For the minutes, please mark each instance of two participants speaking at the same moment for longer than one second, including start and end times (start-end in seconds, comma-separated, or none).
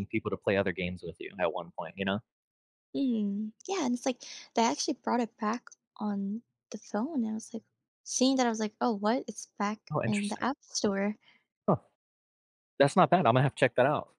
none